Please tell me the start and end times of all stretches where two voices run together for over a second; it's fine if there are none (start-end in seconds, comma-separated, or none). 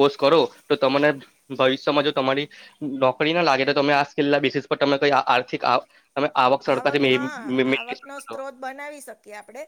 6.8-8.4